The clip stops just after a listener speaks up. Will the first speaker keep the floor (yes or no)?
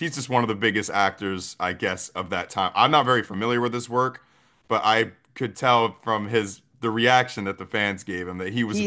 no